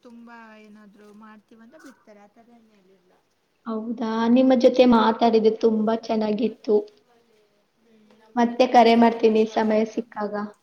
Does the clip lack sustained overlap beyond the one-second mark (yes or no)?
no